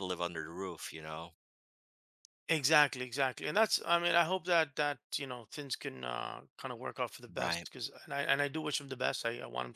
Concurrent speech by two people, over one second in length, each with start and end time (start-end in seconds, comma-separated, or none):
none